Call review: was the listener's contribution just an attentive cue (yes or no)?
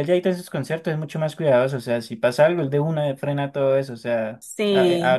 yes